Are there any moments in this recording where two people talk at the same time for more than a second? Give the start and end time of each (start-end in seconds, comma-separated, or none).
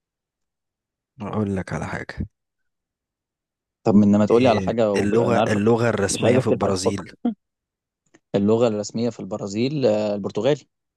4.3-7.1